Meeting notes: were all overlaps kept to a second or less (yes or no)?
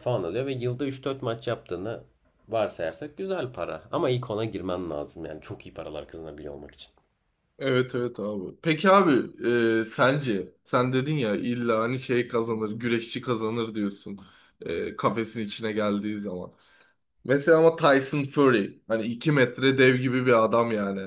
yes